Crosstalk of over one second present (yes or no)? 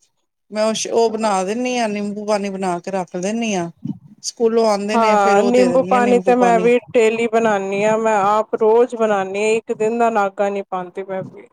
yes